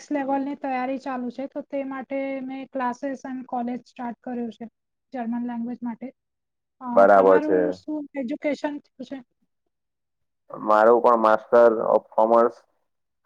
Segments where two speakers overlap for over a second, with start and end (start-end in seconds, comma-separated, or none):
none